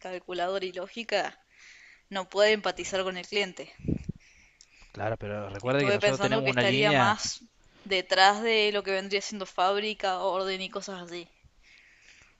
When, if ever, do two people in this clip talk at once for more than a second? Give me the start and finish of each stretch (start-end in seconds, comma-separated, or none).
5.6-7.2